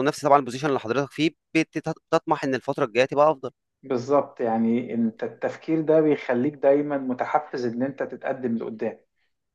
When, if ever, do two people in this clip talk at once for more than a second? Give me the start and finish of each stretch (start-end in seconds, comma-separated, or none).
none